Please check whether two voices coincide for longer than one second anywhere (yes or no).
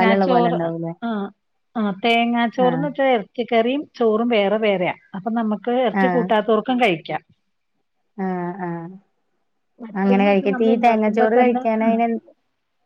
yes